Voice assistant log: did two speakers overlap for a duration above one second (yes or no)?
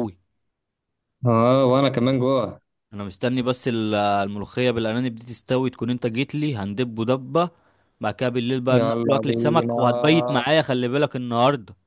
yes